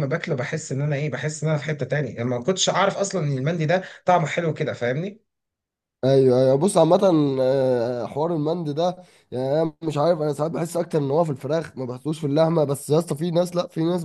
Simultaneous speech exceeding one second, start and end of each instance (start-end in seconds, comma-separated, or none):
none